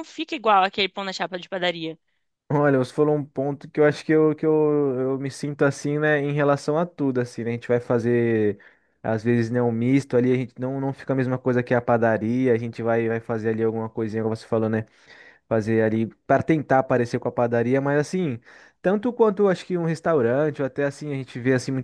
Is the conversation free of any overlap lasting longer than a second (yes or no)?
yes